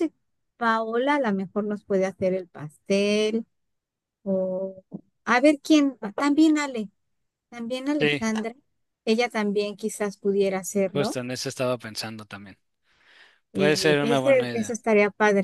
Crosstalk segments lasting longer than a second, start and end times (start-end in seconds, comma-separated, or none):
13.5-14.8